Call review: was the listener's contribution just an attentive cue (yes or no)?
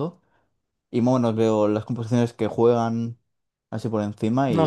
no